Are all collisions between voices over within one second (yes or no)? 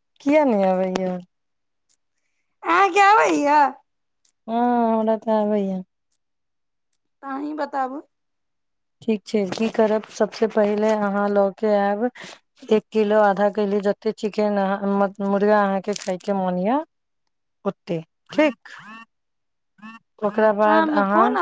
yes